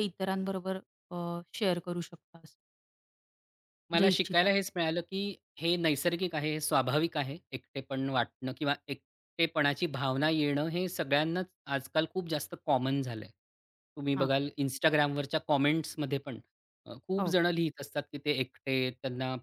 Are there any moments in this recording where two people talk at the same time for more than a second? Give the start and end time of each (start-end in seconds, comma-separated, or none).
none